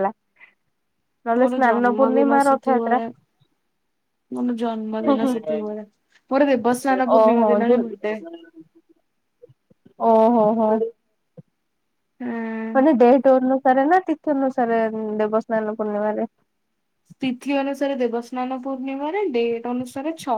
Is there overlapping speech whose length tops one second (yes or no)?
yes